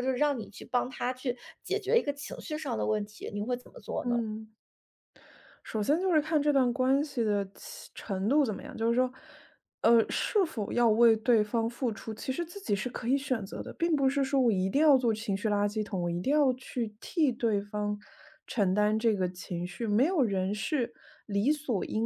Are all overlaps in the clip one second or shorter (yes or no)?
yes